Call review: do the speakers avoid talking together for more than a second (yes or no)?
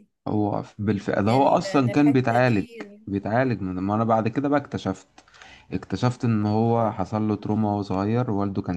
no